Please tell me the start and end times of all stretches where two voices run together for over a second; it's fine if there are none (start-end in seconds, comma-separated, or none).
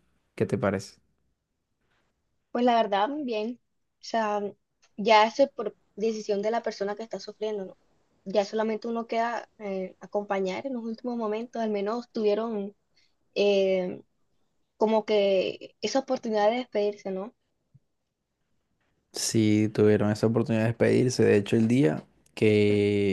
none